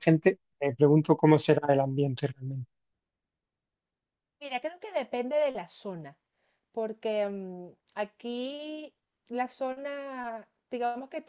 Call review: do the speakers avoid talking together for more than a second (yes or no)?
yes